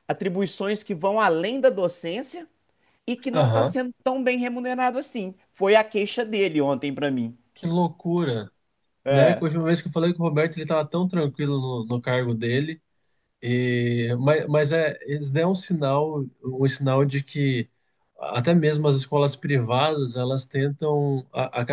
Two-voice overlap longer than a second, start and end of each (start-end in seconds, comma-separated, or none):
none